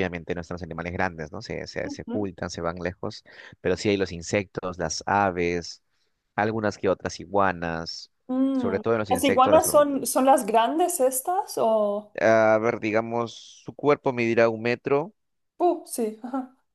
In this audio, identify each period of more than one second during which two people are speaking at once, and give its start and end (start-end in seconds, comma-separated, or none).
8.5-10.0